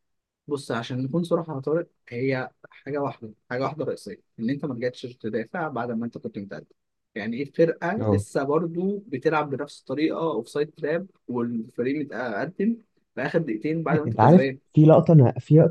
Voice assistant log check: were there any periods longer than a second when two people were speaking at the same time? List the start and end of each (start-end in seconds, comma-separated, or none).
none